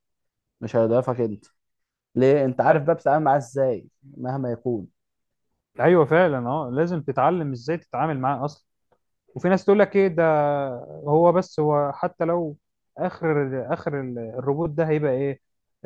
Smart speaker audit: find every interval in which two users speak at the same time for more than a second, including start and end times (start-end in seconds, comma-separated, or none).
none